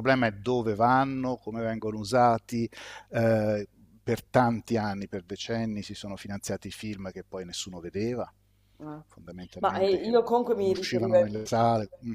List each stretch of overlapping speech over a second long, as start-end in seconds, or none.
9.6-11.1